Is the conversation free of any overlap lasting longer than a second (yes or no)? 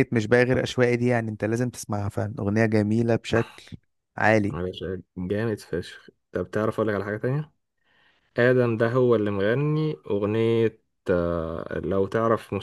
yes